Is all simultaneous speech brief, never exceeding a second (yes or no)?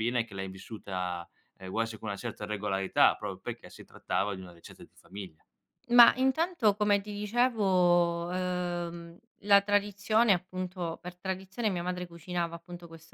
yes